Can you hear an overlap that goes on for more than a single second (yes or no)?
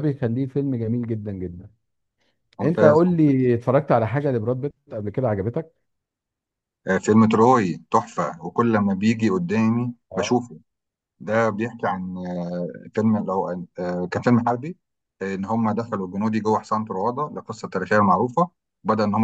no